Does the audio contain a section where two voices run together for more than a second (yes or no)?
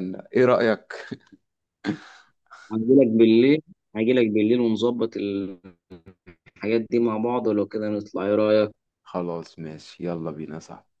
no